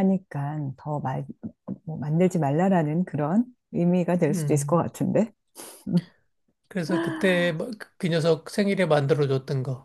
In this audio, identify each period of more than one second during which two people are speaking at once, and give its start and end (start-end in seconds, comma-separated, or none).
none